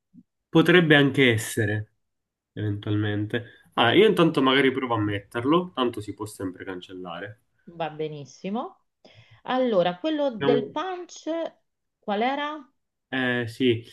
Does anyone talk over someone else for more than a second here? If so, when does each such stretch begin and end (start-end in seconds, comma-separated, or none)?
none